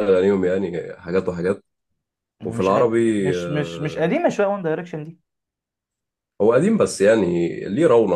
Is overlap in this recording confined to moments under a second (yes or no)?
no